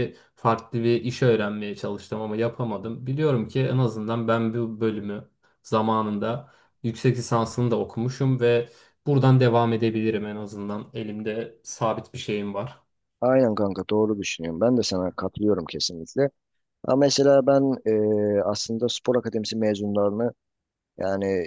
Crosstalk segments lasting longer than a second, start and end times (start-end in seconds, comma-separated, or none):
none